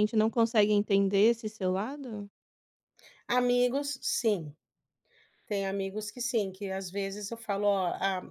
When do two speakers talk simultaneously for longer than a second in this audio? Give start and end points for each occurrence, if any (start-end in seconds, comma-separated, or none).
none